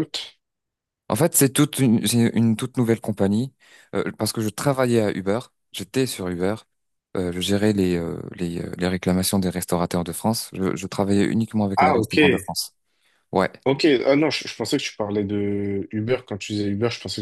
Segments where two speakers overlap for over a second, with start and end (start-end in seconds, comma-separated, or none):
none